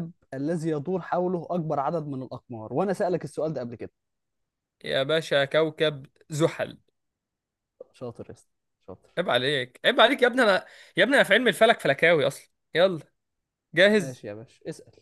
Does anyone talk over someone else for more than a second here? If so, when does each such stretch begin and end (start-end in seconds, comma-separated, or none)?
none